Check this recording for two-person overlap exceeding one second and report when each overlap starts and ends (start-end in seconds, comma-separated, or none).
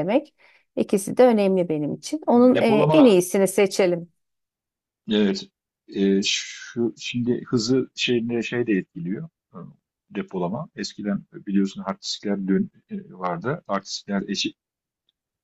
none